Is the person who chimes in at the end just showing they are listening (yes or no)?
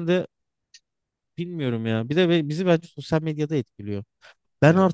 yes